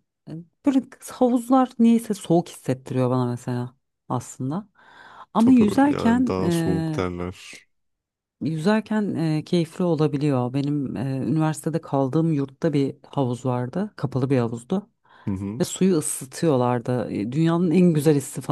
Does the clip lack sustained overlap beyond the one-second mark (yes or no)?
no